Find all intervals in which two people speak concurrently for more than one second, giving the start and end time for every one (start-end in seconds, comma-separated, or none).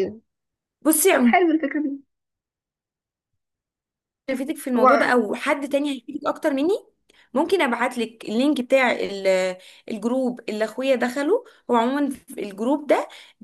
none